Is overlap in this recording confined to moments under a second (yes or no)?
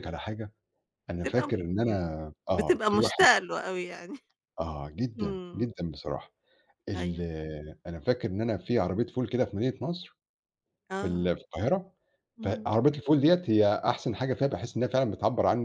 no